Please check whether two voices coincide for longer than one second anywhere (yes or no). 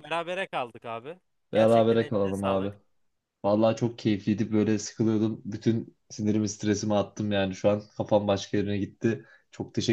yes